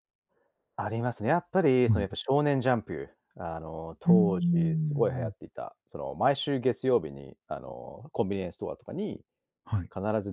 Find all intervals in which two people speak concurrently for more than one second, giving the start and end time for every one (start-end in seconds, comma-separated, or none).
4.1-5.3